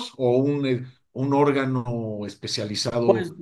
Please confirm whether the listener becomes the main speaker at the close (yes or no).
yes